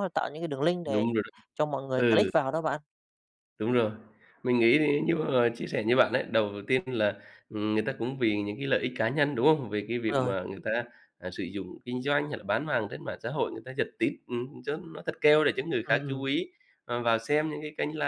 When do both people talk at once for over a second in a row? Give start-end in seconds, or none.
none